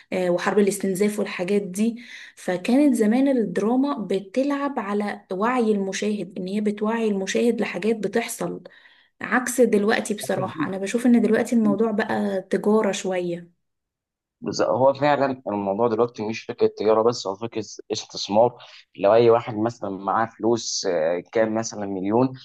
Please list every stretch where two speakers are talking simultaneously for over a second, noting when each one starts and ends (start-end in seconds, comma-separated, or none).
none